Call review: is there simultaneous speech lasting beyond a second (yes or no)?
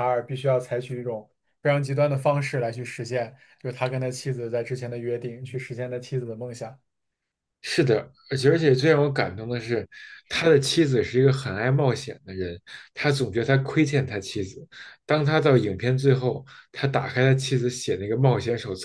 no